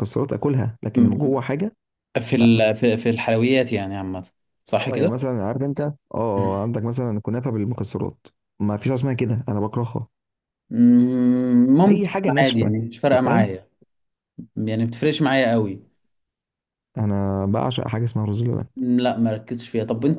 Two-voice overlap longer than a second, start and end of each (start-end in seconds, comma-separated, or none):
11.9-13.5